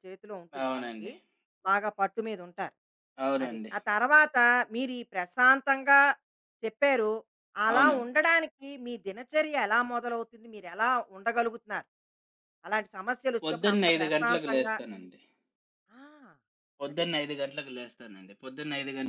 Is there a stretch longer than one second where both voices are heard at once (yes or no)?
yes